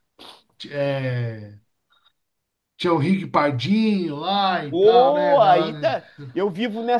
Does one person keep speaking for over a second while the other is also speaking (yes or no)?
yes